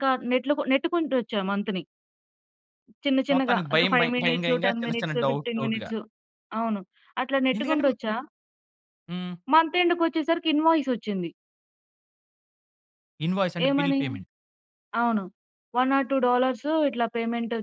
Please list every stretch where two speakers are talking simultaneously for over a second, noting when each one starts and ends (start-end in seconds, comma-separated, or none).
3.3-5.9